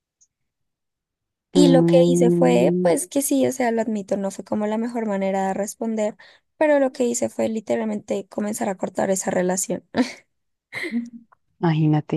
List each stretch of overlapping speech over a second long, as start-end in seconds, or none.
1.6-3.0